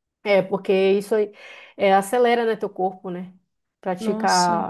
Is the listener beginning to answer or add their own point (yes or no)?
no